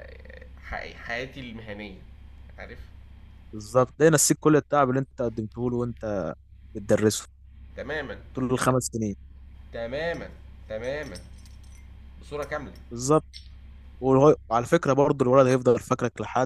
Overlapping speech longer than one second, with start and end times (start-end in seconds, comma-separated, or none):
none